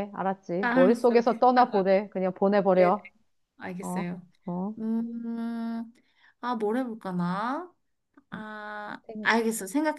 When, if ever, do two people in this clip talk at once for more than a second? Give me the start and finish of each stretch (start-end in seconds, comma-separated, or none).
0.6-2.0